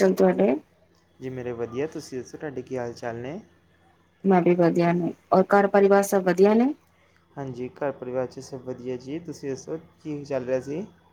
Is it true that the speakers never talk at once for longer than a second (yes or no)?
yes